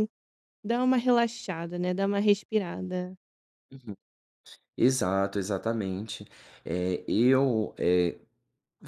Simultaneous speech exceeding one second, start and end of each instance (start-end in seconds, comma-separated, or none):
none